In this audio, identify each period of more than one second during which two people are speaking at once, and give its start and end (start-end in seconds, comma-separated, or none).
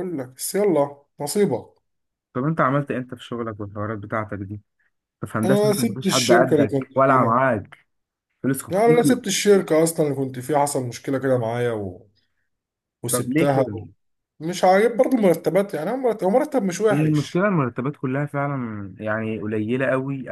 5.4-7.4